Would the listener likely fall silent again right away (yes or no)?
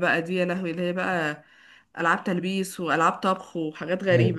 no